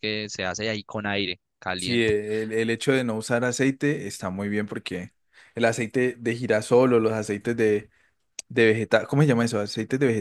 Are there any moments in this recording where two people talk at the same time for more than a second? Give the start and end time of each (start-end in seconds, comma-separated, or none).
none